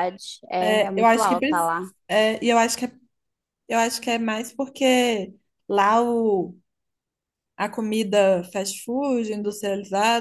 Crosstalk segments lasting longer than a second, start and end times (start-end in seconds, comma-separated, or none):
0.6-1.8